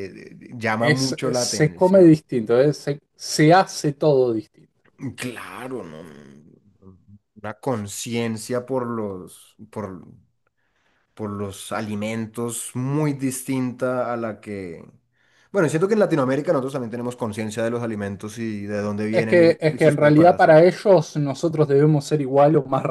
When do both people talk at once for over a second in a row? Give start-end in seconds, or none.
0.8-2.1, 19.1-20.6